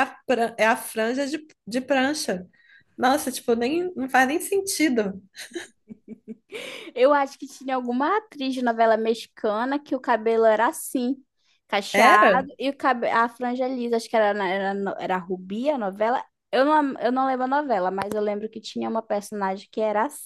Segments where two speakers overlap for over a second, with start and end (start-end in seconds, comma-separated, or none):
none